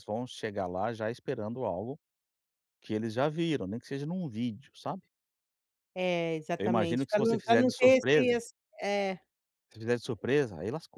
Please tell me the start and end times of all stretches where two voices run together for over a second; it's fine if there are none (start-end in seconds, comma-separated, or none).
6.6-8.4